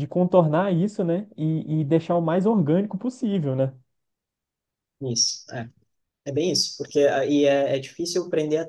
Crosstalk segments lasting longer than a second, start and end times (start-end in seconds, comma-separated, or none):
none